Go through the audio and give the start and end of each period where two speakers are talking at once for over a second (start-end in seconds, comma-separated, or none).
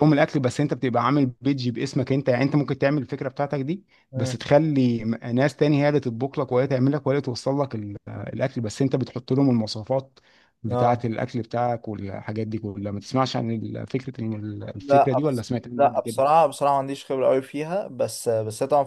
14.8-16.2